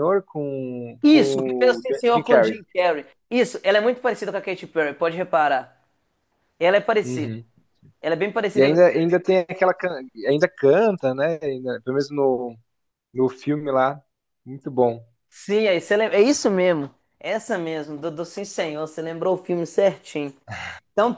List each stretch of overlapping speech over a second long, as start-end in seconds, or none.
1.0-2.6